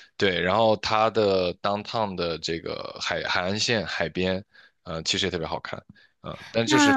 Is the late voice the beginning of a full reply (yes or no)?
yes